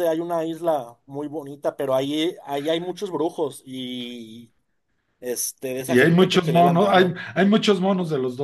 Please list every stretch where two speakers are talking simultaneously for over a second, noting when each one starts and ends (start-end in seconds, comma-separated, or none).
5.8-7.2